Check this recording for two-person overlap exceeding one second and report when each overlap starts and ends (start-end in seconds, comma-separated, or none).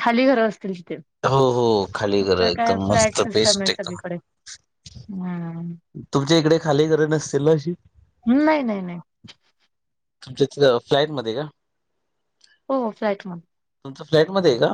2.2-4.0